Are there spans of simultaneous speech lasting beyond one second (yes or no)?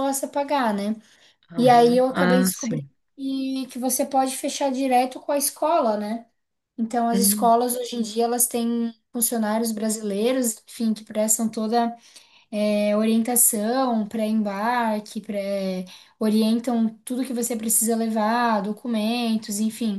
yes